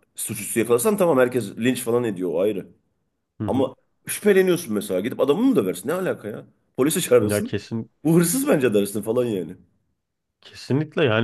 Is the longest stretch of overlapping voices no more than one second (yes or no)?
yes